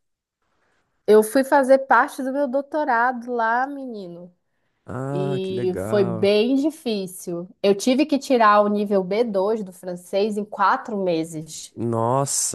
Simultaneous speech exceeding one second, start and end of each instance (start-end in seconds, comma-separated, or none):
5.1-6.3